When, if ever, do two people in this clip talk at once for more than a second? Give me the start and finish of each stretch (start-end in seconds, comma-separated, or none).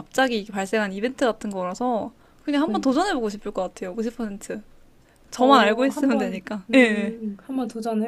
5.4-7.2